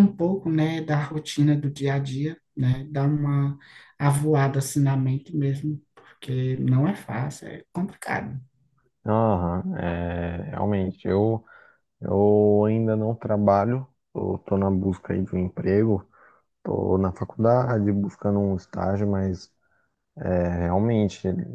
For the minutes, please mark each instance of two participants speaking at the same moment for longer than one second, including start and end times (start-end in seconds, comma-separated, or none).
none